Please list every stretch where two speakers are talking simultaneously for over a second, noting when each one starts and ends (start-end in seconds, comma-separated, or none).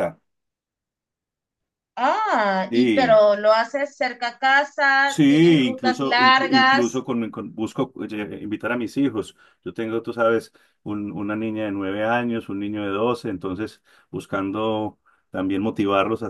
5.1-7.0